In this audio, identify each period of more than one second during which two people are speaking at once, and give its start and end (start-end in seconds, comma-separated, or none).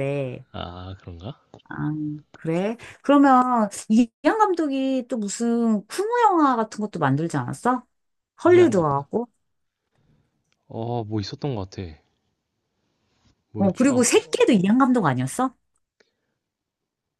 none